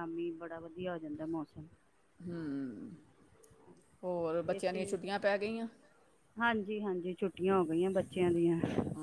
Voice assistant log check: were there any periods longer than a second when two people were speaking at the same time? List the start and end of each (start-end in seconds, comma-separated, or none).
none